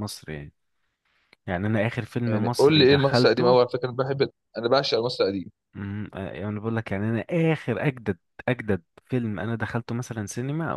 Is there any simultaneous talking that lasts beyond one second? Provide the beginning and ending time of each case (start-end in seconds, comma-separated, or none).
2.3-3.6